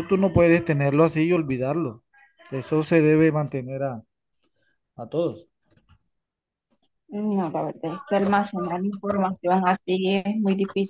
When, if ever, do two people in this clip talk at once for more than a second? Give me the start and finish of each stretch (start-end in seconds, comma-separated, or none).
none